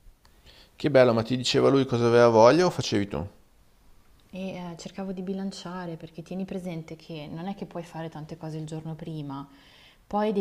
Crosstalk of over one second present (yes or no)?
no